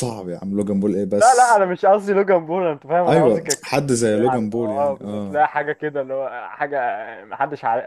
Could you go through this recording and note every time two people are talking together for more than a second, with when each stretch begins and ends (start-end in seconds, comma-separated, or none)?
3.1-5.4